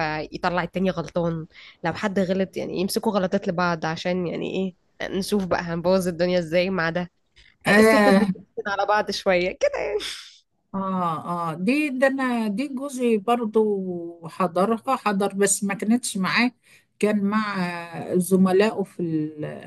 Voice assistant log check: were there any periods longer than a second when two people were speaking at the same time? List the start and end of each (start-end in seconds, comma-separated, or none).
none